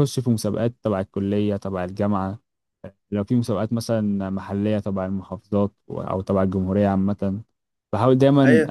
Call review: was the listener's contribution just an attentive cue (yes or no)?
no